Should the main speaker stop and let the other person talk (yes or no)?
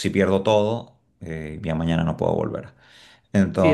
yes